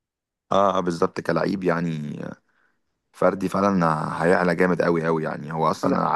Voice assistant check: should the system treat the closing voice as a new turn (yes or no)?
no